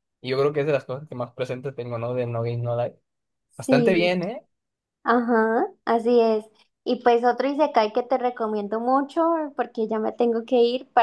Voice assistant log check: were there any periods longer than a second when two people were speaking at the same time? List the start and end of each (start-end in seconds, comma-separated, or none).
none